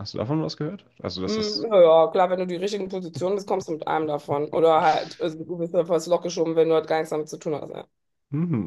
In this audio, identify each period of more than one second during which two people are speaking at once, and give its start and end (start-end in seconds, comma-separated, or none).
none